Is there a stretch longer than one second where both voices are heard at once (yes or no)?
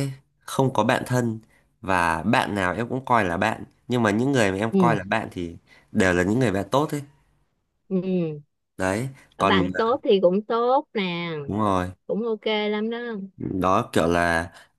no